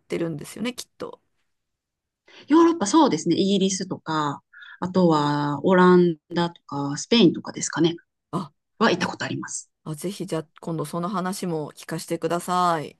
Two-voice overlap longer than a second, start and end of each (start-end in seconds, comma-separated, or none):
none